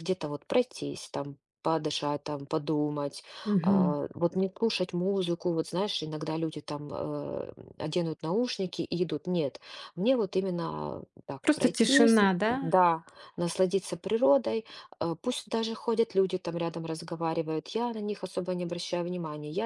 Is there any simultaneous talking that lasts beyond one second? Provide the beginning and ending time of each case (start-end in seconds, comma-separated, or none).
11.4-12.7